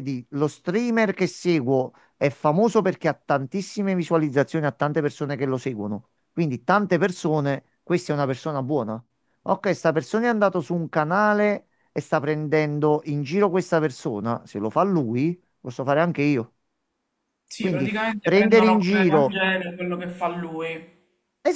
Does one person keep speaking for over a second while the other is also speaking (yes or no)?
yes